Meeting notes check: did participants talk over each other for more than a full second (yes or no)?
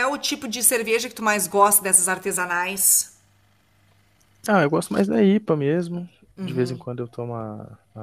no